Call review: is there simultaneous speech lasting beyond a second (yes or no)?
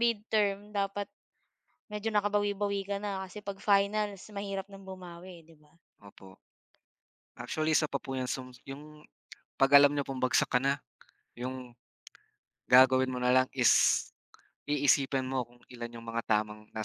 no